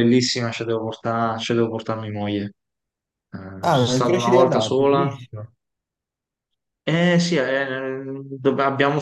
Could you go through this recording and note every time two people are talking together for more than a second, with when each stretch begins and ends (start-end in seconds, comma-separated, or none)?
3.6-5.2